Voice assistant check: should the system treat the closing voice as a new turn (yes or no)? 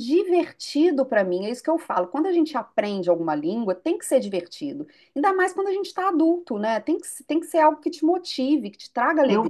yes